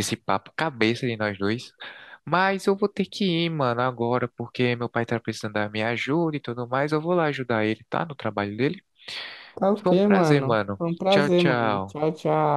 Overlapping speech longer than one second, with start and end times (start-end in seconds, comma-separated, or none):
9.8-12.0